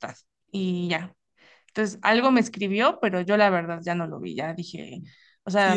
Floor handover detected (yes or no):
yes